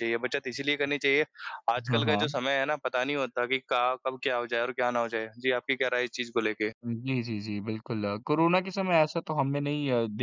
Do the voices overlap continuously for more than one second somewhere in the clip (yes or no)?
no